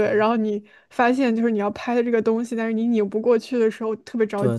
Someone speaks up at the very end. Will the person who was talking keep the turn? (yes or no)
no